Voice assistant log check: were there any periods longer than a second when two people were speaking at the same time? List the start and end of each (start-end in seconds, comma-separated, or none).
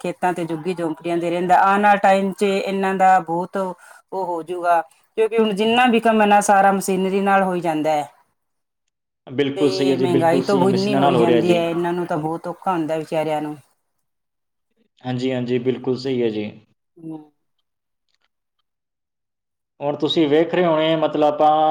9.5-11.6